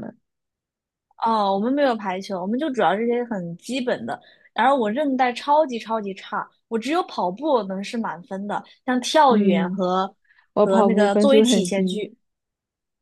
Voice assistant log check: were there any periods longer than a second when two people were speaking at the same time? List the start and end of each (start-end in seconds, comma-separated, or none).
10.6-12.0